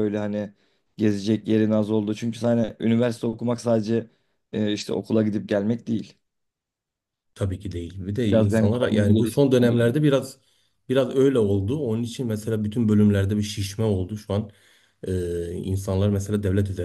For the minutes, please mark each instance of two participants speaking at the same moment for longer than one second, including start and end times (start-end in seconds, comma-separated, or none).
8.3-10.0